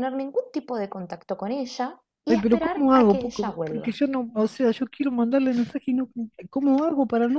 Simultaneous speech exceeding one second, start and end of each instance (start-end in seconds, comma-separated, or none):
2.3-4.0